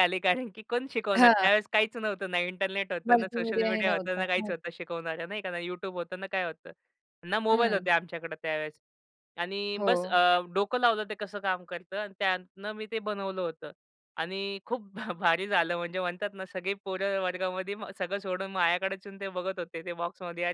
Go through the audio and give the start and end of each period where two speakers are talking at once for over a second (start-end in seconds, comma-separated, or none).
3.1-4.5